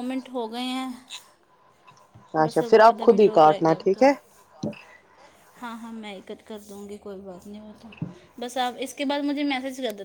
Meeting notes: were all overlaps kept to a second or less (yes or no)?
no